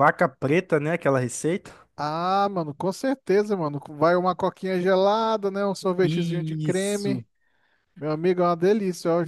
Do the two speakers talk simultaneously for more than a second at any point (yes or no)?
yes